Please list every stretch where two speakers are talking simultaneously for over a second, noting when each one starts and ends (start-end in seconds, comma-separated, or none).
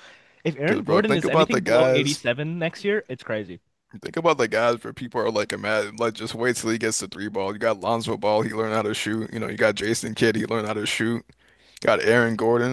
0.7-2.2